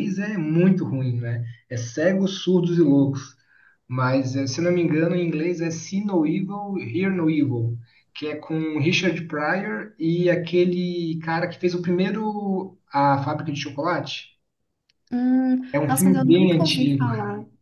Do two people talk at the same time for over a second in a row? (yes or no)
yes